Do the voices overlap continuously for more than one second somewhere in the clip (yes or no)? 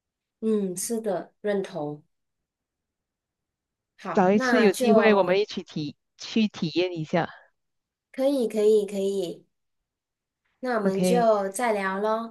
yes